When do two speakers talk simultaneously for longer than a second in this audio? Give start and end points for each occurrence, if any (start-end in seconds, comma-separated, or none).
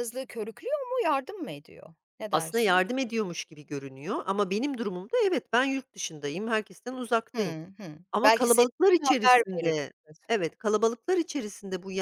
8.1-9.7